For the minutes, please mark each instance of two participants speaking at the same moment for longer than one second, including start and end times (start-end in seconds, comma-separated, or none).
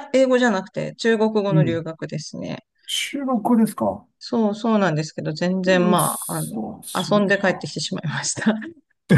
5.7-7.7